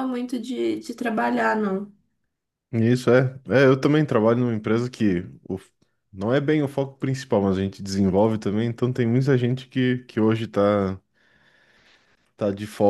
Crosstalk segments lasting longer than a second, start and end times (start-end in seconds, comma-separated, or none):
none